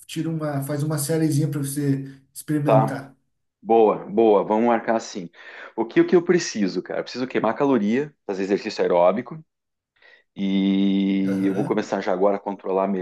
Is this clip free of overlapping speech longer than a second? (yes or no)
yes